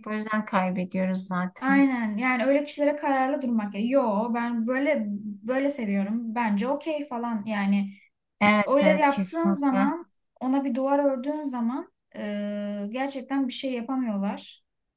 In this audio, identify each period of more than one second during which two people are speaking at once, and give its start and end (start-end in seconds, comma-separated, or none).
8.7-9.9